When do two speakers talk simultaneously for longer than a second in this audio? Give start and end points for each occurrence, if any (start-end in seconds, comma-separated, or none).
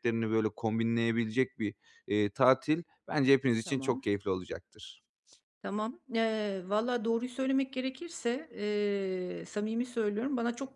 none